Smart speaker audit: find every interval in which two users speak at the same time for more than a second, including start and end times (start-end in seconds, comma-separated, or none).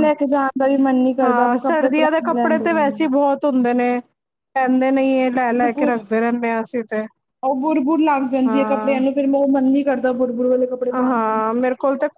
1.2-3.1